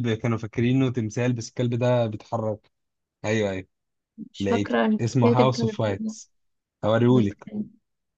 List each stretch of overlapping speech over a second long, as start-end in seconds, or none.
4.4-6.1